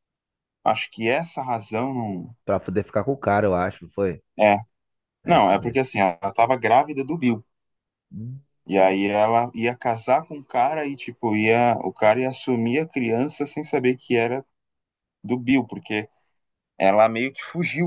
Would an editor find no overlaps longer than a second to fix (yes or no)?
yes